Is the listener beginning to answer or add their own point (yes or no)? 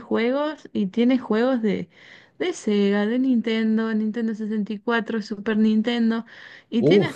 no